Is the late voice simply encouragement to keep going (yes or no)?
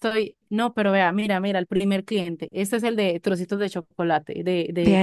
no